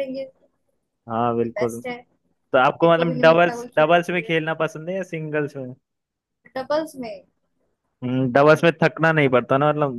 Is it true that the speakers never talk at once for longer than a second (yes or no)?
no